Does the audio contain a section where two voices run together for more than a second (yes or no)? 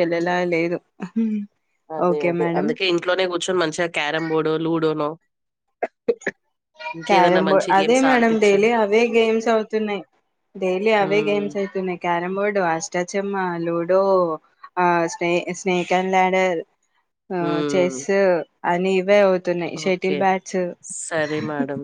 yes